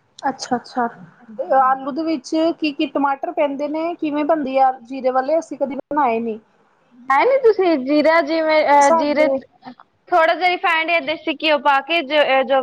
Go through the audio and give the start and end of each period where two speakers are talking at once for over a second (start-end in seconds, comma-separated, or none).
none